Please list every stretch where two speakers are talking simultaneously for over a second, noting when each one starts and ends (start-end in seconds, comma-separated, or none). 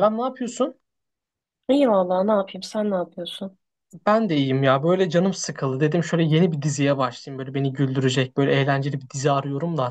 none